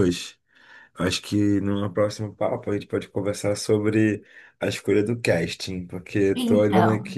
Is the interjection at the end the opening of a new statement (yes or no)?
no